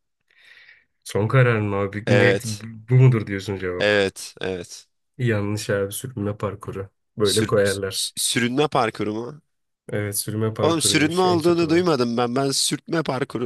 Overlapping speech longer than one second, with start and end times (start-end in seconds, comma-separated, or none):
10.6-11.9